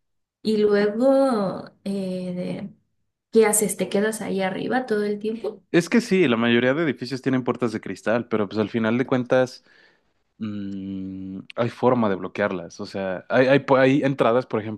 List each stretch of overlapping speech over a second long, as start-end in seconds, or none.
none